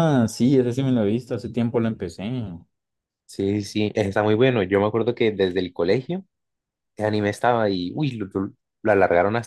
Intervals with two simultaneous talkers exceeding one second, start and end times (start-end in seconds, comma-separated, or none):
none